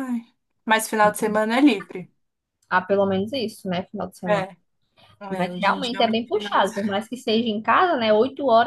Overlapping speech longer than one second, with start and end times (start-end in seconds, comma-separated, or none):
5.4-7.0